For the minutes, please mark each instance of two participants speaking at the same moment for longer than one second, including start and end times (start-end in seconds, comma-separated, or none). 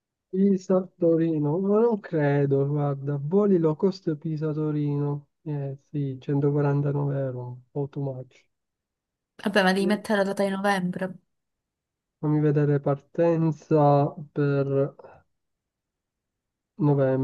none